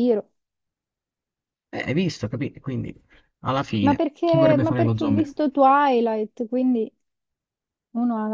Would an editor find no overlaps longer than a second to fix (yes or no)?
no